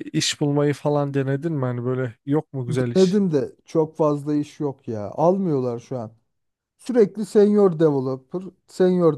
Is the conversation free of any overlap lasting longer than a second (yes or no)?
yes